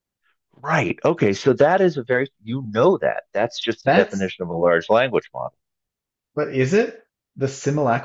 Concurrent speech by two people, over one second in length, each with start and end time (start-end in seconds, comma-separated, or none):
none